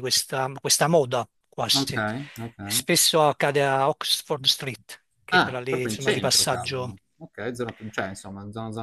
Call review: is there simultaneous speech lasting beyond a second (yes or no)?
yes